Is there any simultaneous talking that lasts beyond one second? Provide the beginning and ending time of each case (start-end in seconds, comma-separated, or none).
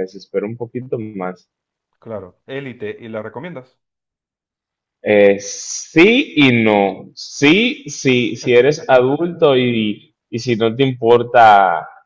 none